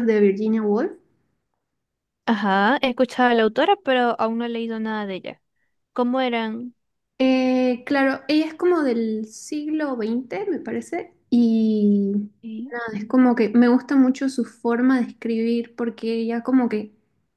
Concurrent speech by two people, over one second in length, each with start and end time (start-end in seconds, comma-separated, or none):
none